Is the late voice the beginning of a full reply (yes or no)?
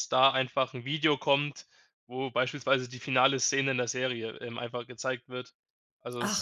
yes